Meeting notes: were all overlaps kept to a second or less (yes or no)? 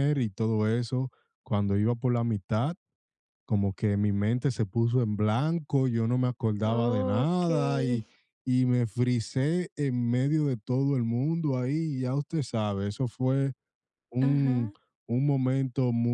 no